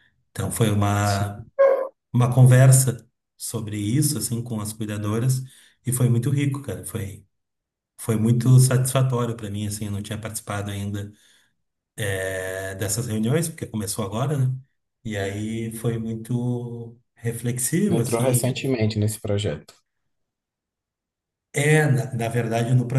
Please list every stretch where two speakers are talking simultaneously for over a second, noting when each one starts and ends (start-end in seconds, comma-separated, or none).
none